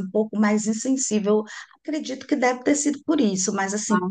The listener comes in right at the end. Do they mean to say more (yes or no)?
no